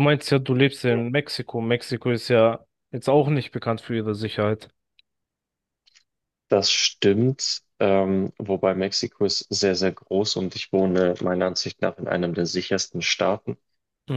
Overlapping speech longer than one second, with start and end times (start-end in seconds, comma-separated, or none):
none